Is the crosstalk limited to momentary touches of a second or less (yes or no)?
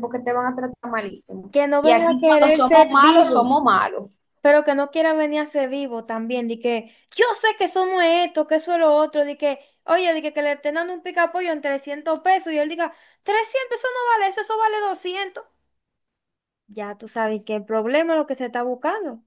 no